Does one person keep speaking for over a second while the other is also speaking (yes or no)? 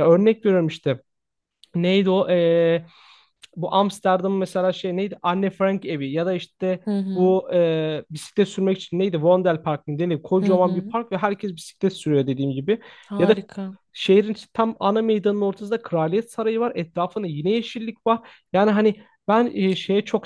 no